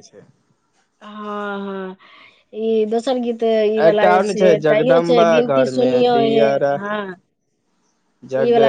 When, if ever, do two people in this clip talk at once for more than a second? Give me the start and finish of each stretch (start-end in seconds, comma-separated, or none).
3.9-6.5